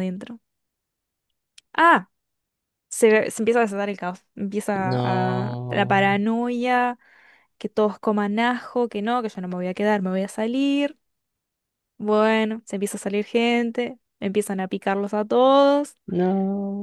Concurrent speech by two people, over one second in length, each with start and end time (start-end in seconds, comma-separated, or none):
4.8-6.2